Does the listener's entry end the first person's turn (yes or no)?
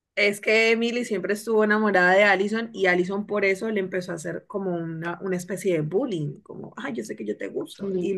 yes